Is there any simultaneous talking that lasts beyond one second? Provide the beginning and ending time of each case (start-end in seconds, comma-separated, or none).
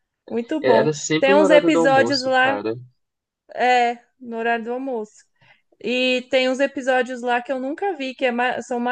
0.6-2.6